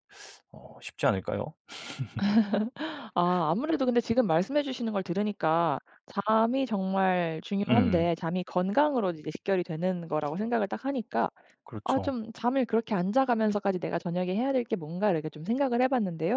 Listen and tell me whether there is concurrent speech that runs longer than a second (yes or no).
no